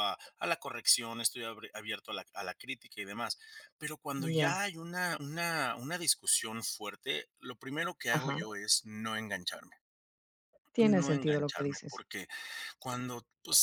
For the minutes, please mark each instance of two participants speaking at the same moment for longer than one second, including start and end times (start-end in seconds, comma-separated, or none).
10.8-12.0